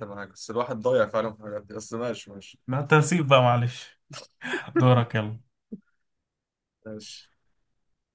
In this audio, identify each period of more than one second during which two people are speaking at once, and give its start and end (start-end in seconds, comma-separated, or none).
none